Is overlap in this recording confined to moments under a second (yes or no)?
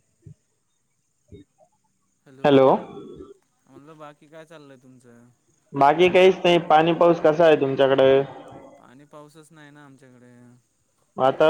yes